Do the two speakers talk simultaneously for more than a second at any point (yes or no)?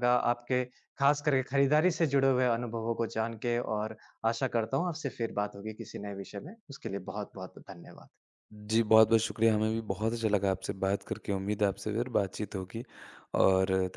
no